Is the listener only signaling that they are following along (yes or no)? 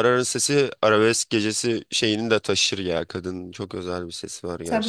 no